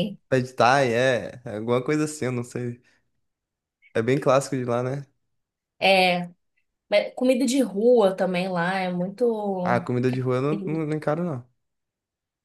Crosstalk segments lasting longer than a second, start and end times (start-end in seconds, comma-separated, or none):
none